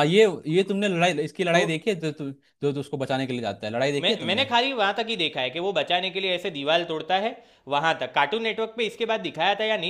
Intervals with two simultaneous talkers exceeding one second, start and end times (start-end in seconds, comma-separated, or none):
none